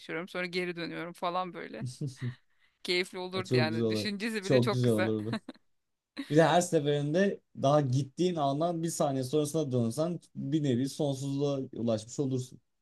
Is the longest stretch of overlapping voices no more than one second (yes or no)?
no